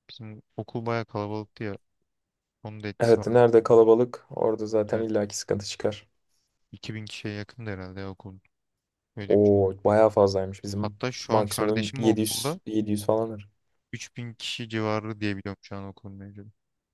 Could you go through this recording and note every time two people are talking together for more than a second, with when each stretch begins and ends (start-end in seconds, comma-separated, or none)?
10.8-12.6